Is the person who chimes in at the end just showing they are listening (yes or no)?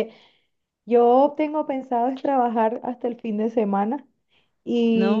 yes